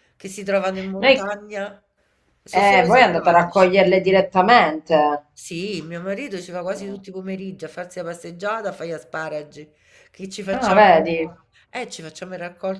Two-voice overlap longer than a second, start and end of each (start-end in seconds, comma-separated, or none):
2.5-3.7